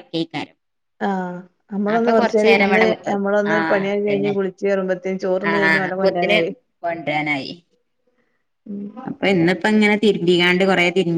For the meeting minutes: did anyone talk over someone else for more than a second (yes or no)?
no